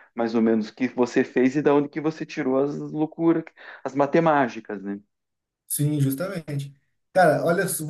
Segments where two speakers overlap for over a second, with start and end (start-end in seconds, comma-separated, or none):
none